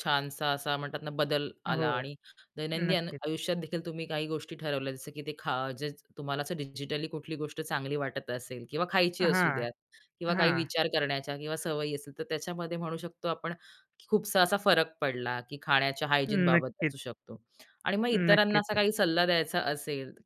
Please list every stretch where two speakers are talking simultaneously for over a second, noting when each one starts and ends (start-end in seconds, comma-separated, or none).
none